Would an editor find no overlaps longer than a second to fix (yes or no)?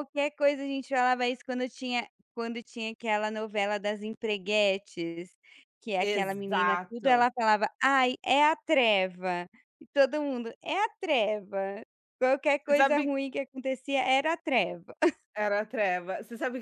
no